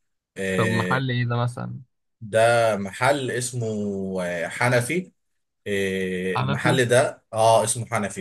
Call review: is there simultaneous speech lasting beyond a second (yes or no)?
no